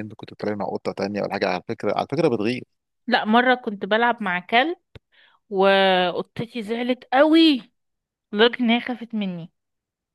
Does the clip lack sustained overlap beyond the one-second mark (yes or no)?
yes